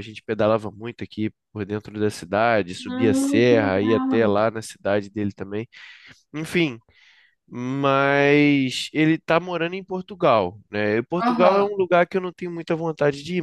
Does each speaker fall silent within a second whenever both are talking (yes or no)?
no